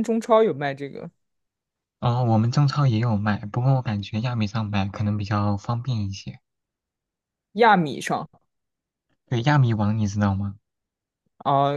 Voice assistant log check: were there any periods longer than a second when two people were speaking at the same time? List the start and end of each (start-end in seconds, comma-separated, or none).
none